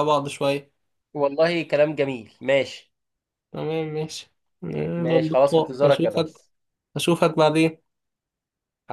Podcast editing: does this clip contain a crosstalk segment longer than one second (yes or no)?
yes